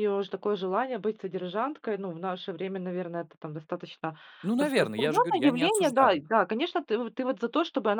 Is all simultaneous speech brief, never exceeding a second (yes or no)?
no